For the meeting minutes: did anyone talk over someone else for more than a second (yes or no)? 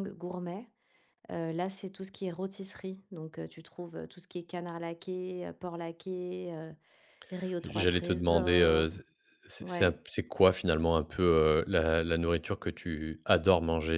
yes